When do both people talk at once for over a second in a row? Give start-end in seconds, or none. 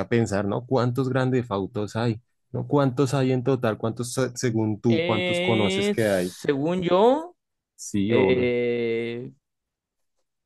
4.9-6.3